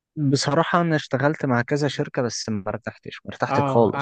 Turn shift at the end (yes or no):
yes